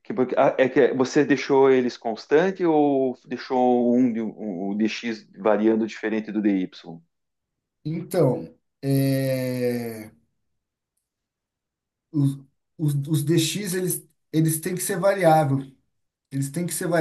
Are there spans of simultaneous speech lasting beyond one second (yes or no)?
no